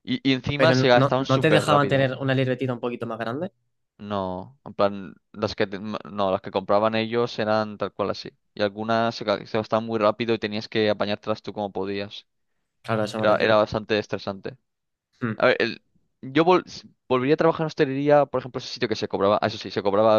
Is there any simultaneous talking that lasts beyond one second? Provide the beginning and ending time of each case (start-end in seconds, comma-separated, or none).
0.6-2.1